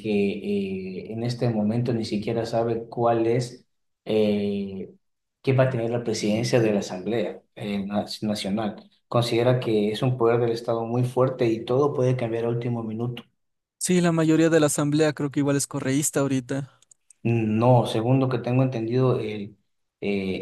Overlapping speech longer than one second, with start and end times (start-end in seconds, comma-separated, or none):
none